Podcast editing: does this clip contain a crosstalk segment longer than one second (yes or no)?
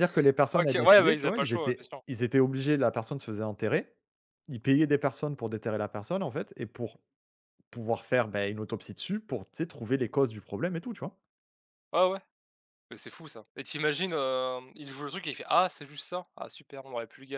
yes